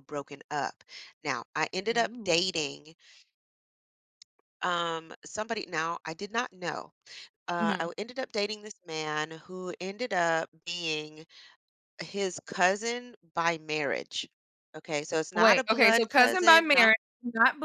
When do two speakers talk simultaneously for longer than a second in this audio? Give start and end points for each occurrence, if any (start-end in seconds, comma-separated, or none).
15.3-16.9